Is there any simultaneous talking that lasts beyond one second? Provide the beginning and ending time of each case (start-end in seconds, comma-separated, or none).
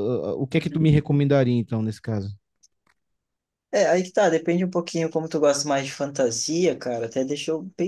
none